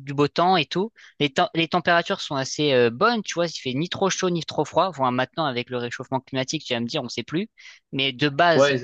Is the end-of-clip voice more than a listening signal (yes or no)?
no